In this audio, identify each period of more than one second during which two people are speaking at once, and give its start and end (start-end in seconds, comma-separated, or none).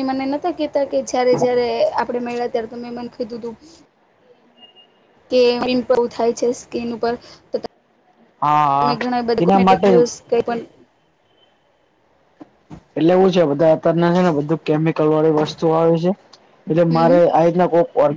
8.4-10.0